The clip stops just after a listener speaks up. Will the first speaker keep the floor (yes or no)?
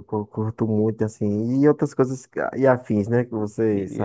no